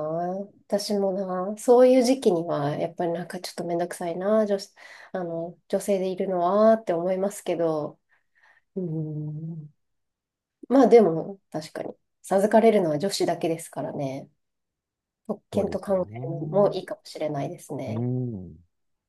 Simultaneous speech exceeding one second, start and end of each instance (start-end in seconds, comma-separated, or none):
15.5-16.7